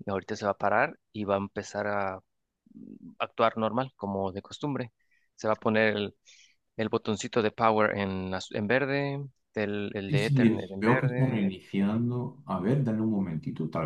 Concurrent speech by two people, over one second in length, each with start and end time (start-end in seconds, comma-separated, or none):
10.1-11.5